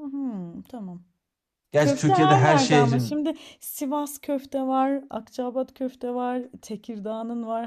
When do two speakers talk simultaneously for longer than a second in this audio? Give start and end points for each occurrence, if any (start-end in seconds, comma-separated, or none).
1.8-3.2